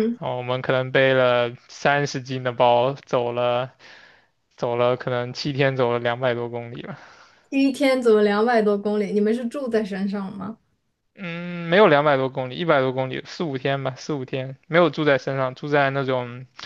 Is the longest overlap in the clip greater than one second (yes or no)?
no